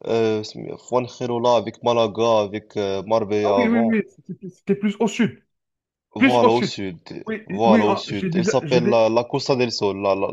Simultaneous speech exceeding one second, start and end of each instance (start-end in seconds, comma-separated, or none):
7.5-8.9